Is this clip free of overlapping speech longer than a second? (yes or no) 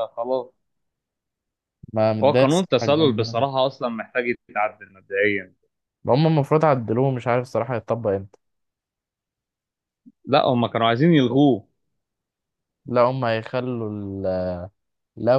no